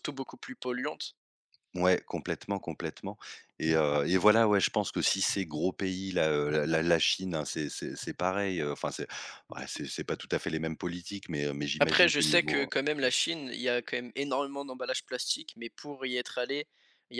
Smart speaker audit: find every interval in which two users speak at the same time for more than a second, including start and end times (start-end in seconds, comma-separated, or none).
11.8-13.1